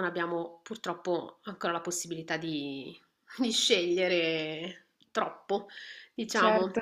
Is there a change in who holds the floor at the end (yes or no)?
no